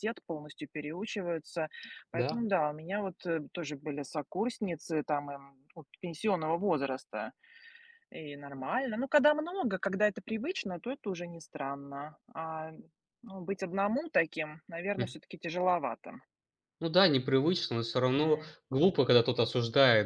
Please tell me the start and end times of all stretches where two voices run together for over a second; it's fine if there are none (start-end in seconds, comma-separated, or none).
none